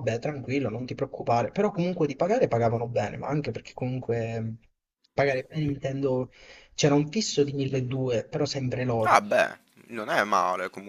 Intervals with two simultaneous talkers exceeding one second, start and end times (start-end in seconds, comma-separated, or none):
none